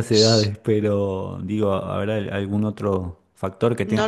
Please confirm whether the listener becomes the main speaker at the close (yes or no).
yes